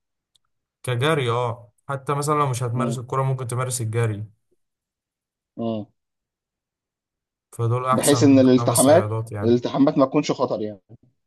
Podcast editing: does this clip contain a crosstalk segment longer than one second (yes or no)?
yes